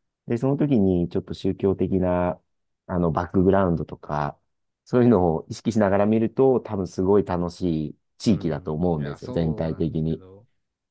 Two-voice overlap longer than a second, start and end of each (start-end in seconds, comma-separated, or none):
8.2-10.2